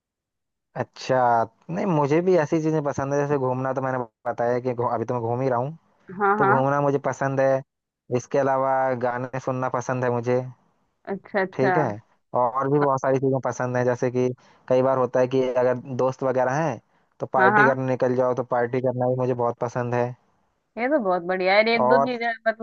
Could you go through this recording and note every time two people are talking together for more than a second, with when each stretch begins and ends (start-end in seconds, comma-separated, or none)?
none